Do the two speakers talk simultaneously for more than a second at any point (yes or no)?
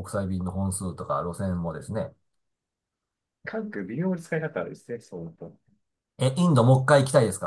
no